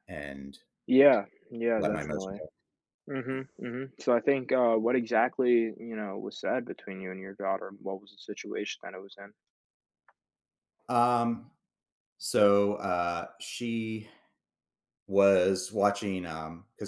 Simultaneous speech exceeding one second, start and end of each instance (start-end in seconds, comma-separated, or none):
none